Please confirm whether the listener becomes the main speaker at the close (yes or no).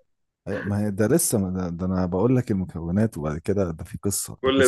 no